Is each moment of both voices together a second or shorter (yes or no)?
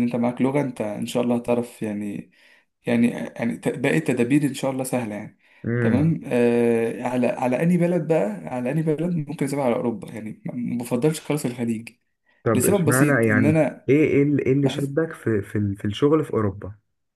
no